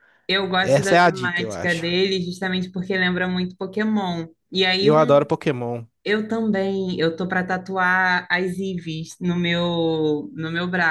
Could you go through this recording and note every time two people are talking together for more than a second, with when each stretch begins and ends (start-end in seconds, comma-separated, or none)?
0.6-1.9